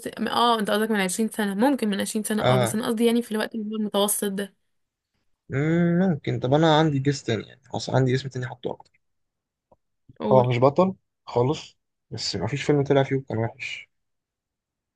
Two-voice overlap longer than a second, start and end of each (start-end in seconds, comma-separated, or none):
none